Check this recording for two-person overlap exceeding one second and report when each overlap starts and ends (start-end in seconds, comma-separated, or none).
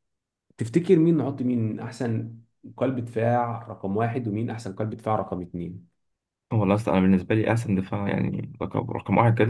none